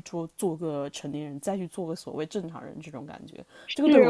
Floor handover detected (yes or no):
yes